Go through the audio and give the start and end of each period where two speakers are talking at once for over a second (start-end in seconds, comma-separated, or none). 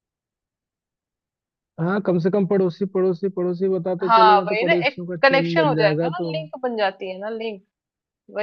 4.0-6.3